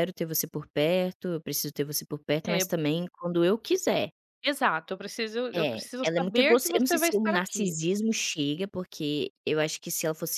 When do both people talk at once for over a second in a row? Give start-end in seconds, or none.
5.5-7.8